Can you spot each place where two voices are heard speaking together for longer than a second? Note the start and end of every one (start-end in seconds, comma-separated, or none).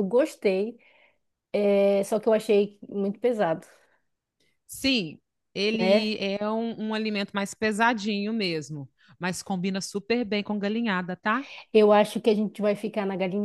none